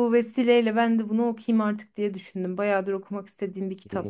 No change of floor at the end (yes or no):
no